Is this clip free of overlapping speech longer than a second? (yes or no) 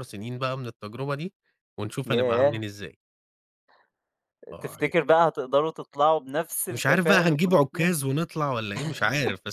no